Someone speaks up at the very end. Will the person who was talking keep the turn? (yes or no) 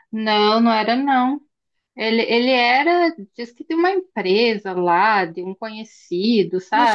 no